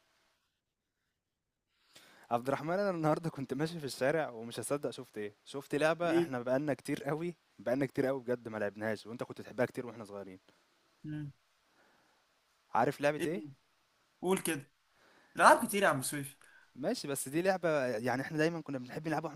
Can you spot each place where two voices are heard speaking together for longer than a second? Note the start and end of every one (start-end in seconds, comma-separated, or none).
none